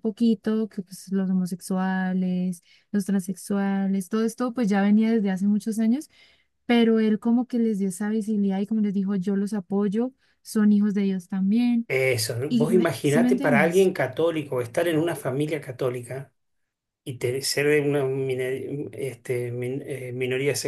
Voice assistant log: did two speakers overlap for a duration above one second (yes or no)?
yes